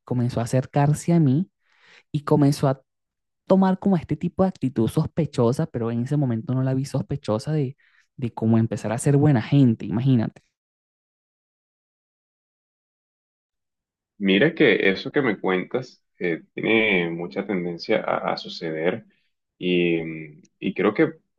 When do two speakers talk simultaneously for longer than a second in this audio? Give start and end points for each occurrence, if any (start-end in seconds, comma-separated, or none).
none